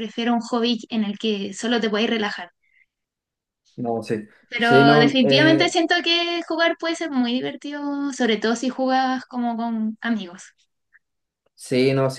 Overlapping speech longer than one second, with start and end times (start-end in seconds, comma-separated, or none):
4.5-5.8